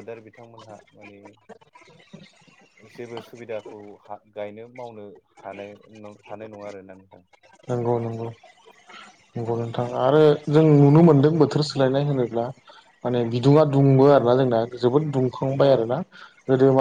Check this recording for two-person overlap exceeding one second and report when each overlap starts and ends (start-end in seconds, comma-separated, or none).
none